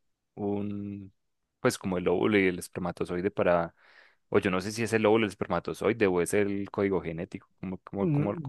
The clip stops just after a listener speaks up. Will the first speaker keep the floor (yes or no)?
no